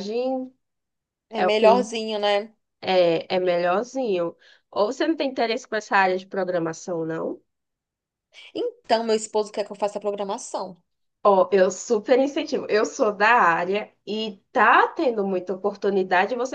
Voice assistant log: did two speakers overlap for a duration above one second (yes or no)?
no